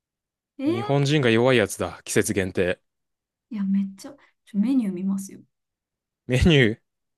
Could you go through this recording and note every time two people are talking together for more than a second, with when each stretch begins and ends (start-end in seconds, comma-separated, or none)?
none